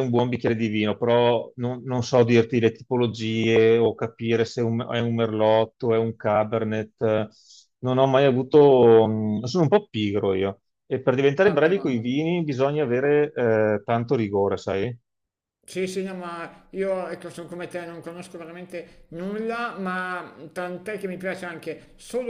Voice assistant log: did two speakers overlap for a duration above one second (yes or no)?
no